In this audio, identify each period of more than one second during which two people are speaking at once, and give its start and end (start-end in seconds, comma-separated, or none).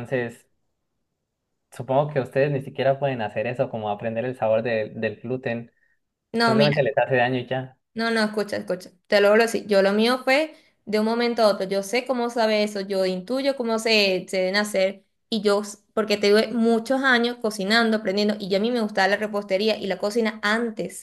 none